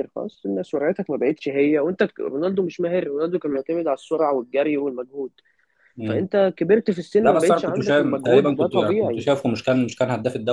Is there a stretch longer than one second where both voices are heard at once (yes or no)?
yes